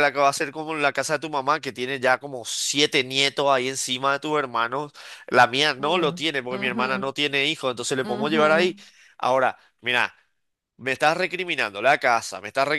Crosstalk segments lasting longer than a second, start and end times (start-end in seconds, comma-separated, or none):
5.8-7.1